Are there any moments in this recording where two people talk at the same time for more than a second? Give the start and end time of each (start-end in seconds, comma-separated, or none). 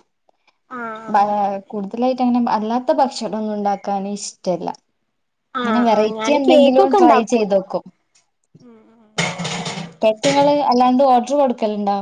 5.6-7.5